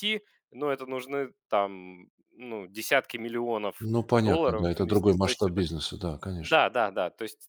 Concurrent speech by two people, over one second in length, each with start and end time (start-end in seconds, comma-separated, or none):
3.8-5.6